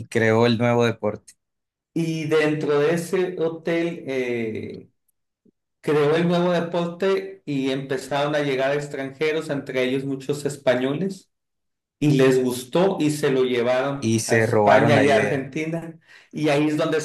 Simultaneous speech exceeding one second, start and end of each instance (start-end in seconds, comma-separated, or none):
14.0-15.4